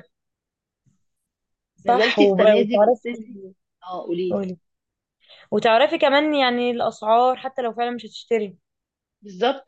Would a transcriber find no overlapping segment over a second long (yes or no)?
no